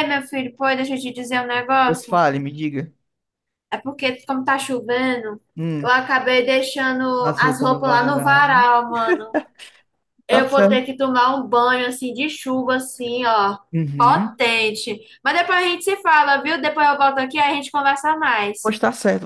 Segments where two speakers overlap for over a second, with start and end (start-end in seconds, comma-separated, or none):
7.3-8.6